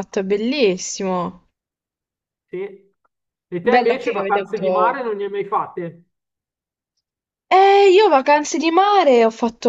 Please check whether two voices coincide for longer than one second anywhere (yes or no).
yes